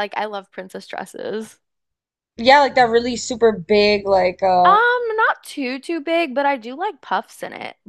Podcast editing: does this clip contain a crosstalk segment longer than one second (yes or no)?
no